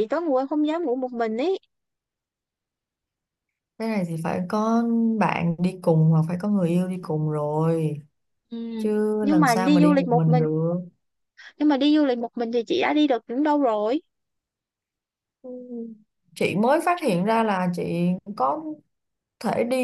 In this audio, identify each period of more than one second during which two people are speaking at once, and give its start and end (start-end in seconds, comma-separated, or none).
9.2-10.4